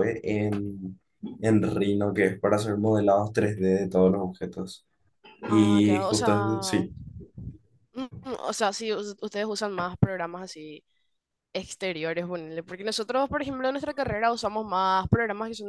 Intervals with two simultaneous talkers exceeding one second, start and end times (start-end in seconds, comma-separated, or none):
5.5-6.9